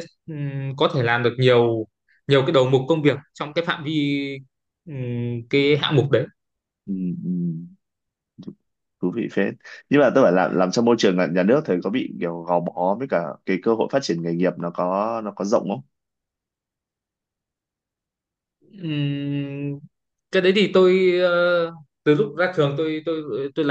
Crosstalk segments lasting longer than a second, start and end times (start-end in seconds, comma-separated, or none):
none